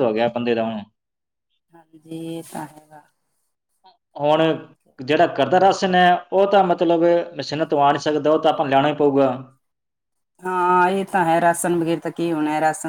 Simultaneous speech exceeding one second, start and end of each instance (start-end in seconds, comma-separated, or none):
none